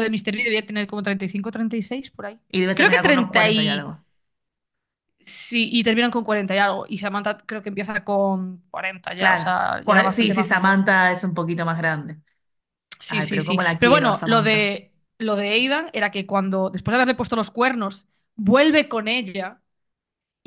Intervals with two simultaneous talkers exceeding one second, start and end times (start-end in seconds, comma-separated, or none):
2.5-4.0, 9.2-10.8, 13.1-14.7